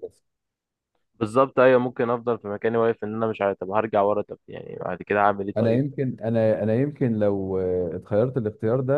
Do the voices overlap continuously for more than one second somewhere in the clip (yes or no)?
no